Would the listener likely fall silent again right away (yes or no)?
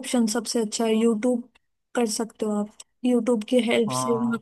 yes